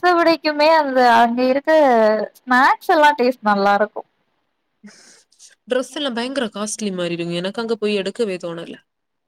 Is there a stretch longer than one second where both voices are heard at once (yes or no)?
no